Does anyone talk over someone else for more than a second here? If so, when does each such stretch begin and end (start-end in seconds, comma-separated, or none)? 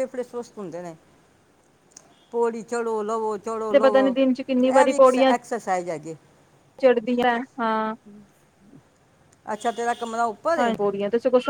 none